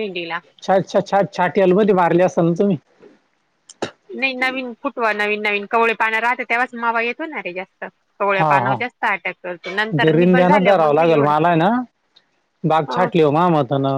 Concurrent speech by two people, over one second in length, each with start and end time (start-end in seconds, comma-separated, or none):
10.0-11.3